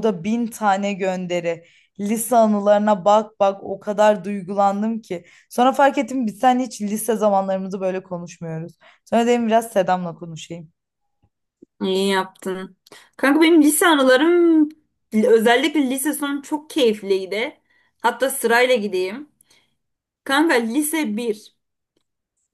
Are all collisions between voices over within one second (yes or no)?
yes